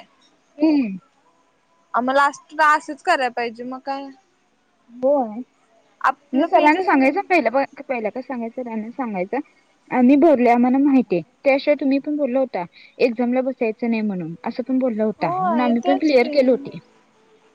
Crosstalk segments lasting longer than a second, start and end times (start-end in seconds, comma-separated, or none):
15.2-16.7